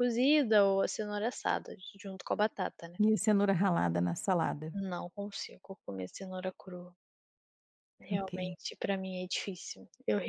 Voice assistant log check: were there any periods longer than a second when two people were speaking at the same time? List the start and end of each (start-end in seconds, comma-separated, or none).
none